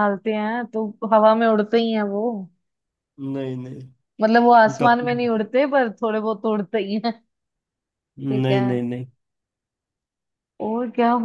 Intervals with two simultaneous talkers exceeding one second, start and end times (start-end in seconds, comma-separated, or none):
none